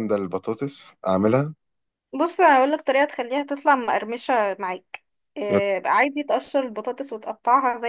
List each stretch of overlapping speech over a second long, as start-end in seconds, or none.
none